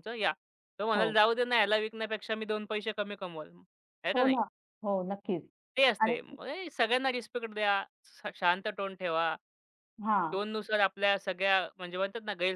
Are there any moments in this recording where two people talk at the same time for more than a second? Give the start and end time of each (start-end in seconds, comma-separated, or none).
none